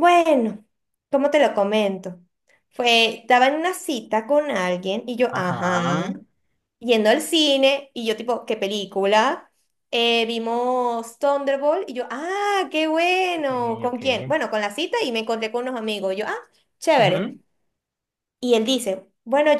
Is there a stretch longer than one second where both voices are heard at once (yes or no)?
no